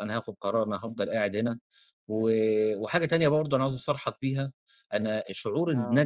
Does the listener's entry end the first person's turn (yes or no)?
no